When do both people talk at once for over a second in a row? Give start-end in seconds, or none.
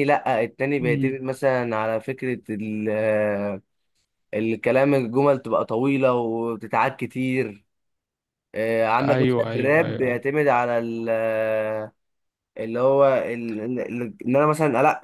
9.0-10.3